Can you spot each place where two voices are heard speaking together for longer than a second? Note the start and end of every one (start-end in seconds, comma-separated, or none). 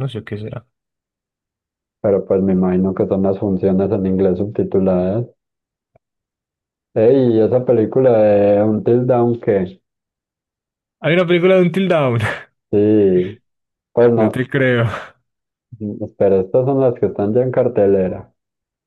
none